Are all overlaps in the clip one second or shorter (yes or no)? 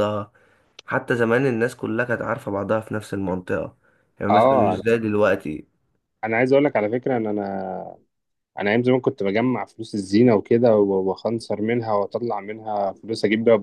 yes